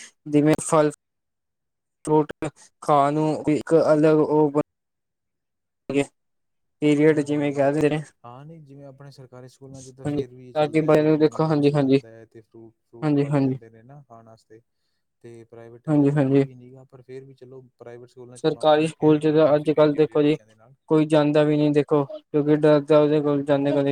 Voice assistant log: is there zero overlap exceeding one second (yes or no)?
no